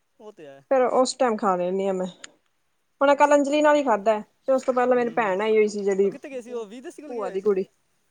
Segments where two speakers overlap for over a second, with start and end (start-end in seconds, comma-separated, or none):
none